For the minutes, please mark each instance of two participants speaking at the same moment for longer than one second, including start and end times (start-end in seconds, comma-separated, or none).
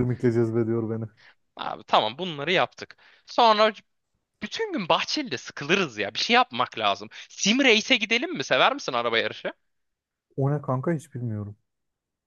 none